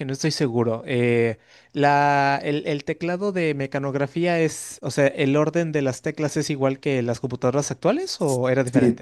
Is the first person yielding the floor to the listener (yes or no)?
yes